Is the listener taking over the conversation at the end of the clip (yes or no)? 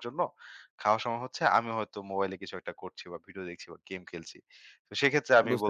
no